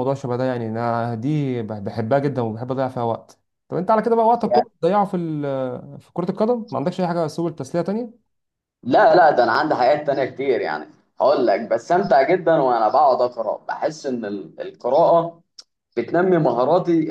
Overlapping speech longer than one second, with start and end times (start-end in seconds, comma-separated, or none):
none